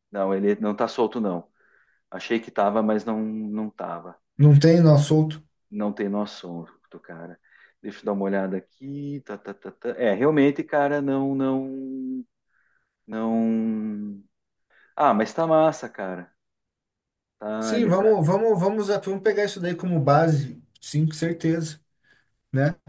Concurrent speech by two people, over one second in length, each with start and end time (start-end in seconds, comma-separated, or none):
none